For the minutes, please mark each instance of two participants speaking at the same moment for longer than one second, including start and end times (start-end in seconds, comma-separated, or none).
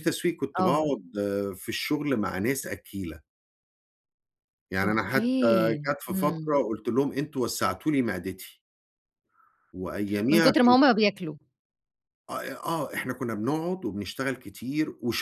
4.8-6.6